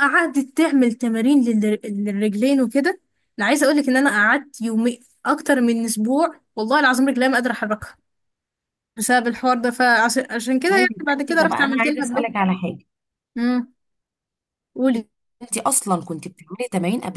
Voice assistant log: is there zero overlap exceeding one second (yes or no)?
no